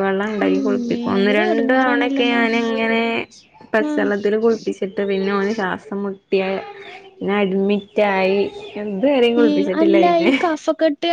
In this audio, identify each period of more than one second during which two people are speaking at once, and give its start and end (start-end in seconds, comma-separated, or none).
0.5-2.4